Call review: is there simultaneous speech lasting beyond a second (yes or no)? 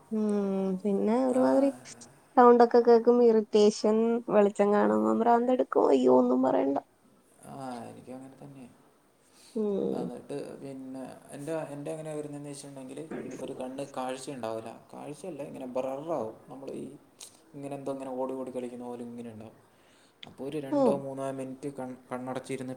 no